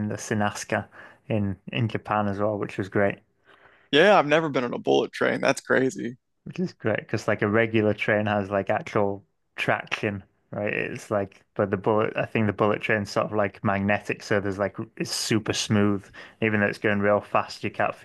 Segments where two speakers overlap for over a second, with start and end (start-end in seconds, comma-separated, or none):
none